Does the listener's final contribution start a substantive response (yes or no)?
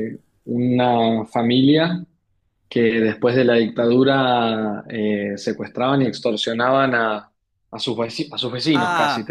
yes